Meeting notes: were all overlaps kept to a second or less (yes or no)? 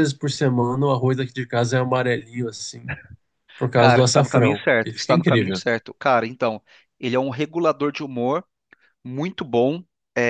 no